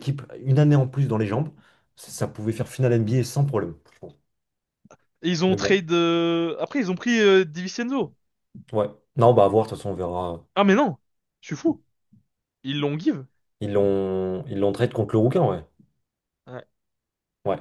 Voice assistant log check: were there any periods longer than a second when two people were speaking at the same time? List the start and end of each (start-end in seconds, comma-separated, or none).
none